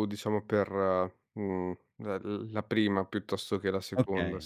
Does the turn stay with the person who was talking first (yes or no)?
no